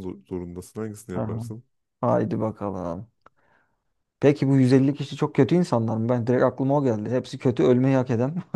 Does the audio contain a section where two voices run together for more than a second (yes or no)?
no